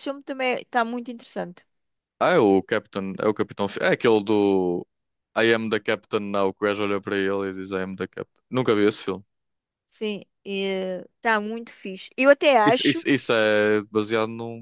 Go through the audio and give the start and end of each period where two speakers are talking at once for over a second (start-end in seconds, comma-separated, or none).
none